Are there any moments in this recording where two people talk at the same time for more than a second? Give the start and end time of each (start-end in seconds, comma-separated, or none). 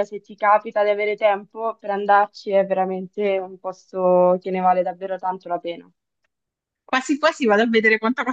none